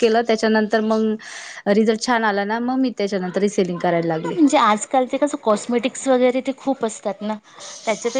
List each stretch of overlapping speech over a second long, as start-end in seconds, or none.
none